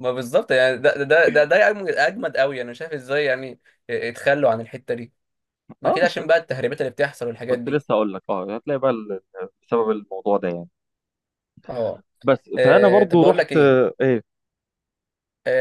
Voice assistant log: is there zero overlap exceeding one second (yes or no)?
no